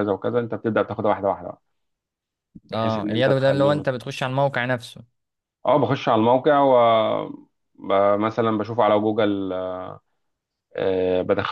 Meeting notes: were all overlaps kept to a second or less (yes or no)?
no